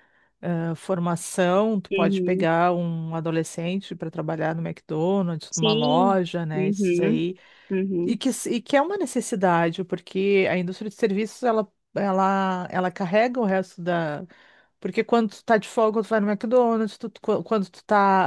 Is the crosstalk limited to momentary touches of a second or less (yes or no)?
no